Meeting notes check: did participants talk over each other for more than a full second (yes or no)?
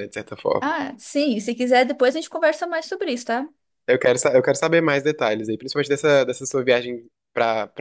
no